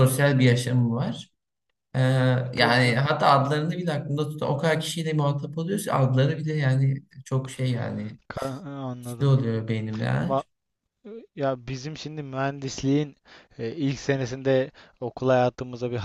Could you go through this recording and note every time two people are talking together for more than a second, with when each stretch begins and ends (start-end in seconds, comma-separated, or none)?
none